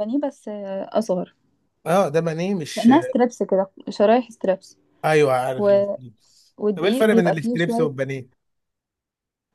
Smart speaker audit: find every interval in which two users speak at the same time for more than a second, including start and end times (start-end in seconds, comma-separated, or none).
6.6-7.9